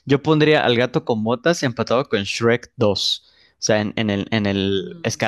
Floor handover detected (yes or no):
no